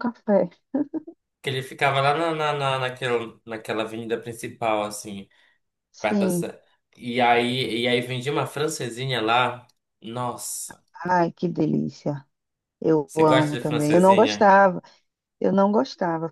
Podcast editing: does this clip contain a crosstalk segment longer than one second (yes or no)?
yes